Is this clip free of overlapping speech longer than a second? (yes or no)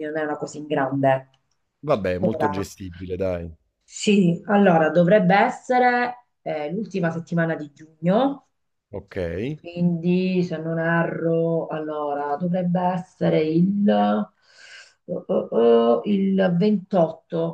yes